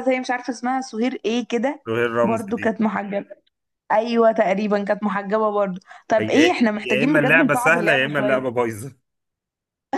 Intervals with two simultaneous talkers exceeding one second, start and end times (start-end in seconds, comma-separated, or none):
6.2-8.4